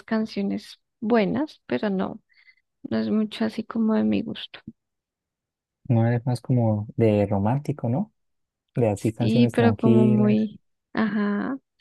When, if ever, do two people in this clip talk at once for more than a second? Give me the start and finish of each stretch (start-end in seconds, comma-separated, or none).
9.2-10.4